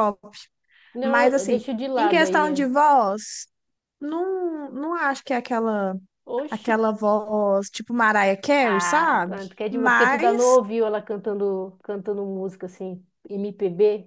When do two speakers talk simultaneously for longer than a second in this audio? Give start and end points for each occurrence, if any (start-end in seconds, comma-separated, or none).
1.0-2.6, 8.6-10.6